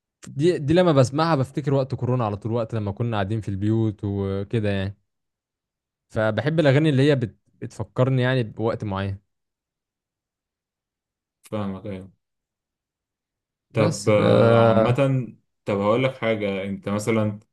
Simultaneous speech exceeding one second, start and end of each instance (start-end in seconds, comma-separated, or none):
none